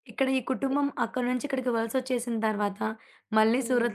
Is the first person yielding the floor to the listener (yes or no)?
no